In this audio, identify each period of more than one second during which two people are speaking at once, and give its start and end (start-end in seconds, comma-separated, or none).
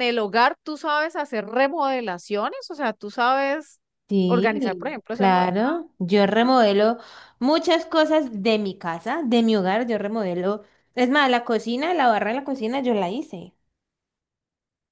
4.3-5.5